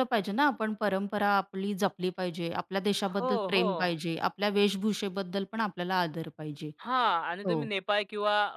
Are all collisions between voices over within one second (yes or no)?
yes